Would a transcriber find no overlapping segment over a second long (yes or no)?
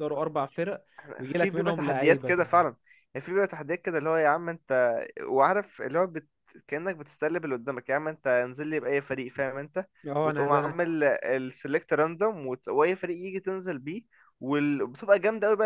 no